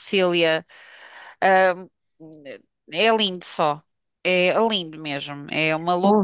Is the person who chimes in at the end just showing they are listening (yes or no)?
no